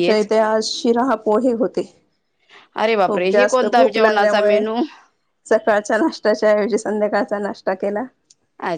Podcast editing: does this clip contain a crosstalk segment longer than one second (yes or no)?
yes